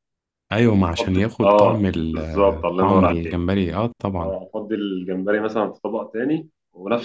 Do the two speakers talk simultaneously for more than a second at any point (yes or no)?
yes